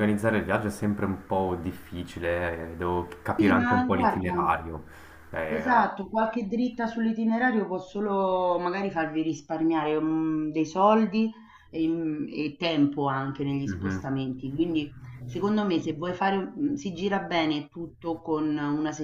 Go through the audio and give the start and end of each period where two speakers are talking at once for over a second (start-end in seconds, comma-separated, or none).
3.4-4.5